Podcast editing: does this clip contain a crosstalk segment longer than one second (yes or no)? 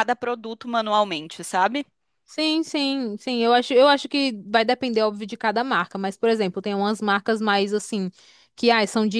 no